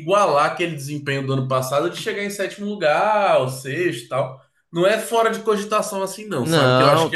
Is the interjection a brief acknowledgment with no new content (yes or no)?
no